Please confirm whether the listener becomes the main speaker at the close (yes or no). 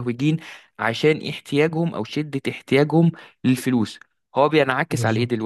no